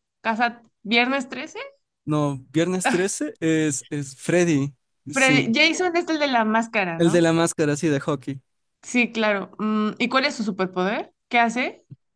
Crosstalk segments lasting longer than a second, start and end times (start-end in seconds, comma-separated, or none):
none